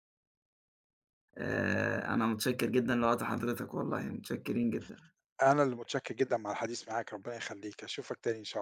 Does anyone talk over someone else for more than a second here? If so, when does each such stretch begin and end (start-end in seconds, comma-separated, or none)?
none